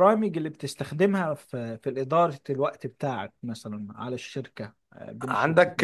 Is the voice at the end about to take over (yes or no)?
yes